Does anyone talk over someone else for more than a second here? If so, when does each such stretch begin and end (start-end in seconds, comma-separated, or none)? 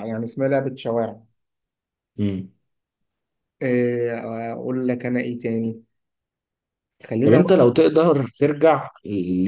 none